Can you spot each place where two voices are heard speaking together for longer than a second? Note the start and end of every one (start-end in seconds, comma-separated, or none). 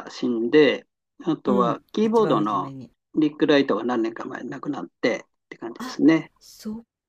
1.4-2.7